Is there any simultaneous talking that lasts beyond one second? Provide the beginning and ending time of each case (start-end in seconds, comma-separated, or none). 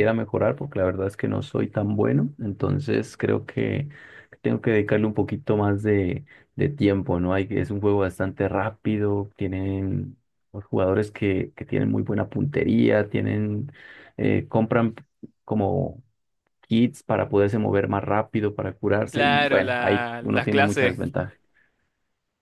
19.1-21.1